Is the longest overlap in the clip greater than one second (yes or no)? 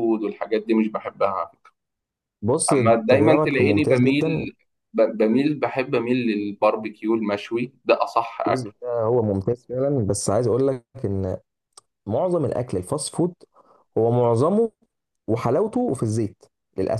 yes